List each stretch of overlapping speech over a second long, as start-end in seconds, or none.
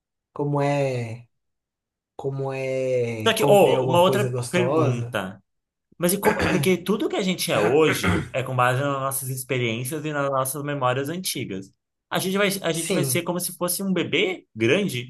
3.2-5.2